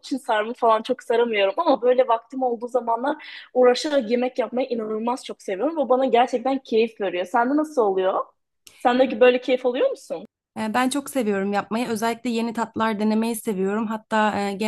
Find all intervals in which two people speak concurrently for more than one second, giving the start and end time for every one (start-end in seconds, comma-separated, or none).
none